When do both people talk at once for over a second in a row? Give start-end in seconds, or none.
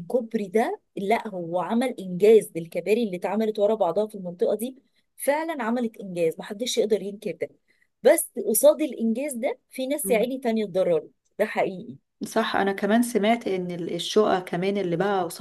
none